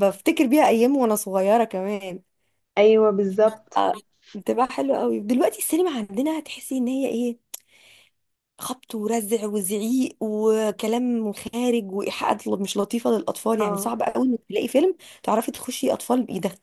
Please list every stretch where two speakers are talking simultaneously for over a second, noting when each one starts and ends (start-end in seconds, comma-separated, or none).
none